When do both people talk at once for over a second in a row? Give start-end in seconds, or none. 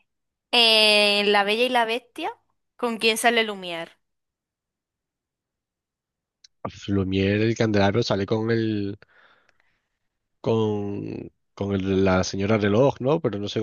none